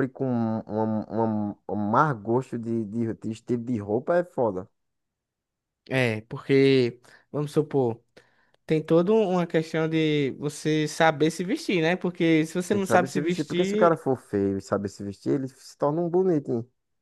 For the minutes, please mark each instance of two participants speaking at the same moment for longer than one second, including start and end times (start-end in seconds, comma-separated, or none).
12.7-14.0